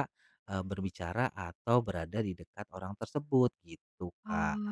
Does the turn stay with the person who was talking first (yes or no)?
no